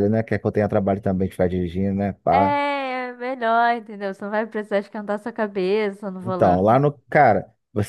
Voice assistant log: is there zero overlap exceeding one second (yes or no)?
yes